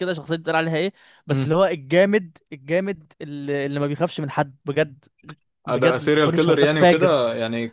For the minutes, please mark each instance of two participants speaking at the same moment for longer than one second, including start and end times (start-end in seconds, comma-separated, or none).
5.7-7.1